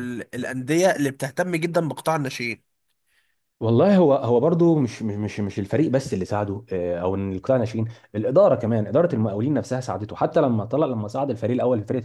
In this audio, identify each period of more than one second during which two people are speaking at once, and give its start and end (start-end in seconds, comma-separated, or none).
none